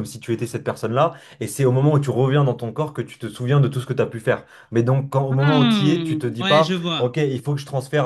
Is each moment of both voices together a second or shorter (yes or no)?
no